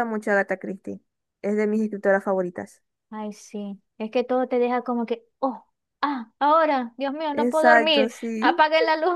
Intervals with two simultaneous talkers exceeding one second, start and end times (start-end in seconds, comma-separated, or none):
7.3-8.6